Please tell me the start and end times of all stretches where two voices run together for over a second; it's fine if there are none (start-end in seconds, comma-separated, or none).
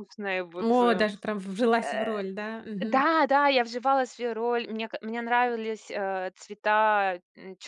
none